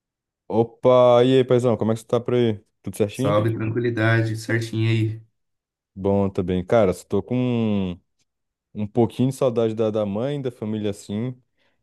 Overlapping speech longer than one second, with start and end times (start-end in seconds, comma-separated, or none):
none